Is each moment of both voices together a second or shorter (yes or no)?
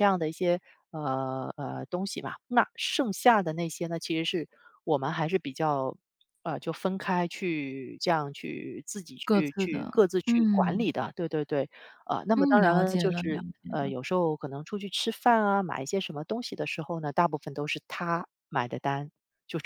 no